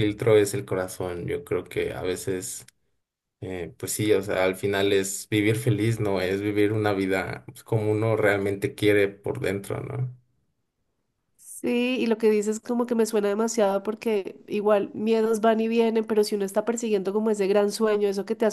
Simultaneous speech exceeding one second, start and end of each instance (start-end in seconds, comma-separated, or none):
none